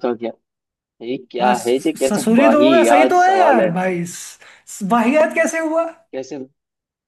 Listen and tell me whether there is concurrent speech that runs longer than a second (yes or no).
yes